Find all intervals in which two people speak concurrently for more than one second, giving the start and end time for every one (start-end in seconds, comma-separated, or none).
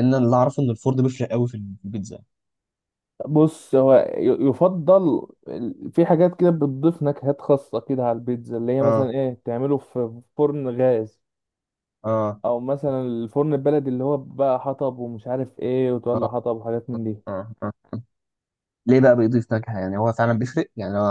none